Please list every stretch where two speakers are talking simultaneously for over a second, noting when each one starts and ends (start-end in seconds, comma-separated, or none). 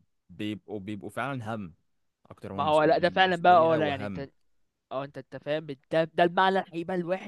2.5-4.3